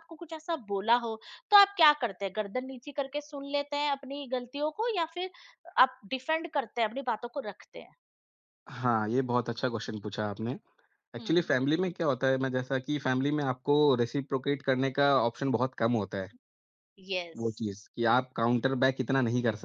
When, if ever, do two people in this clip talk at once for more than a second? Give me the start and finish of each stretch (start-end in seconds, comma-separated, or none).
none